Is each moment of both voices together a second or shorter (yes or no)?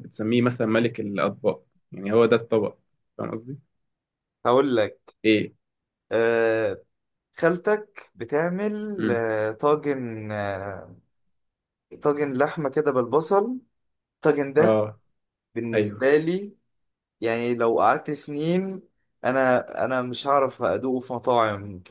yes